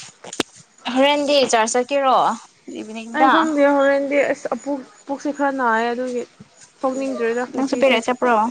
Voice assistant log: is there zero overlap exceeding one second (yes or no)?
yes